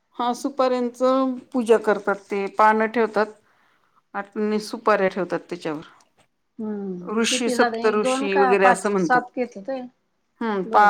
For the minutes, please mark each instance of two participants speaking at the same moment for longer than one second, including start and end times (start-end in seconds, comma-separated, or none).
7.2-9.2